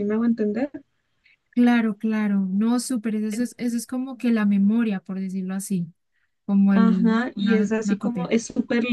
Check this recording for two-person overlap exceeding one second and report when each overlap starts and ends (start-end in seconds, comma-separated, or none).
6.7-8.3